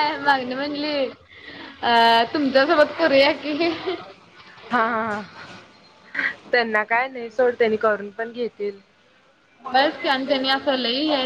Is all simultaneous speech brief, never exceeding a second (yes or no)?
yes